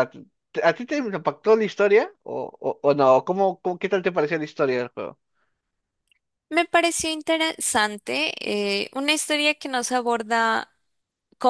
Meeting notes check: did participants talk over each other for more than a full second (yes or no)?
no